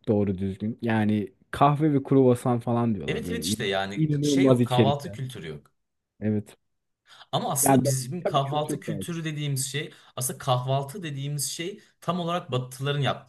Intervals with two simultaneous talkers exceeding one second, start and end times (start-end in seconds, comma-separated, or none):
3.1-5.2, 7.6-9.1